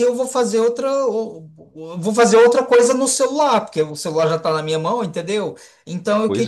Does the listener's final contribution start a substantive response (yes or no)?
no